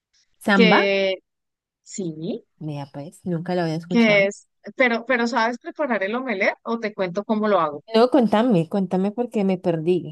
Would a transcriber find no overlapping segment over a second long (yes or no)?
yes